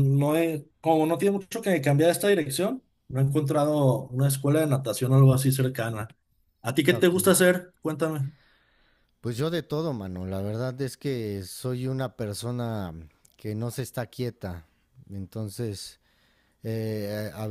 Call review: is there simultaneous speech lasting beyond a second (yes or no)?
no